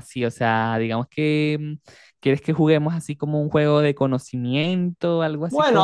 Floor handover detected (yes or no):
yes